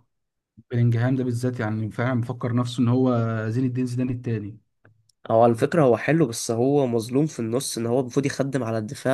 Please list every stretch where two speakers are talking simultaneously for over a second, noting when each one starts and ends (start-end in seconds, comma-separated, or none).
none